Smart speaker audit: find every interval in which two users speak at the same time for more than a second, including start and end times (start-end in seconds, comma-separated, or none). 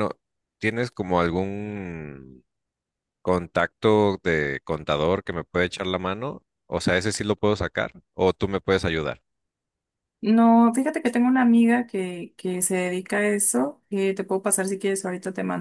none